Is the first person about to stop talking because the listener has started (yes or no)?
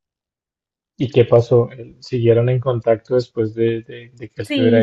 yes